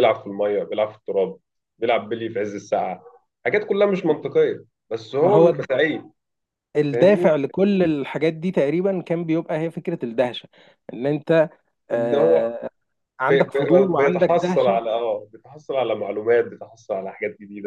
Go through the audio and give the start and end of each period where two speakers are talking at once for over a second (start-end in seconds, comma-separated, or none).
13.3-14.8